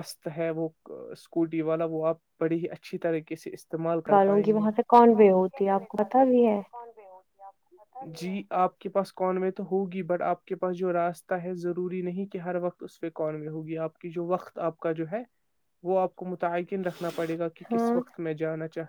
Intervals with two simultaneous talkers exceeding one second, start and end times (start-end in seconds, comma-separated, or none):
none